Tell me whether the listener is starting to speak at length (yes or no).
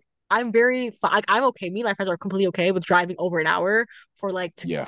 no